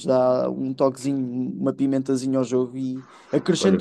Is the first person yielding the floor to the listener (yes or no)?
yes